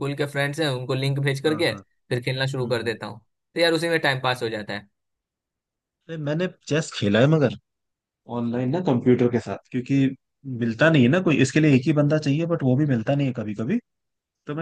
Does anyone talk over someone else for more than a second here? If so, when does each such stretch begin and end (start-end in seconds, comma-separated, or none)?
none